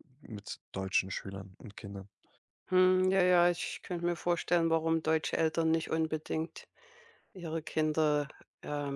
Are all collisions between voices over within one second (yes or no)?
yes